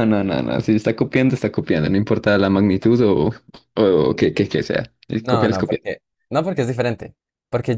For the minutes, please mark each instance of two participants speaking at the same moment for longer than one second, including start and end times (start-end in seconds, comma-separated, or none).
none